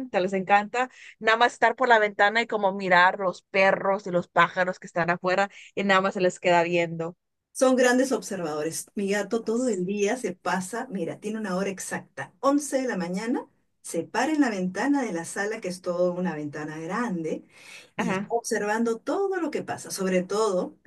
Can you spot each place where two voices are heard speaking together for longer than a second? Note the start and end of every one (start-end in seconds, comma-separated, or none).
none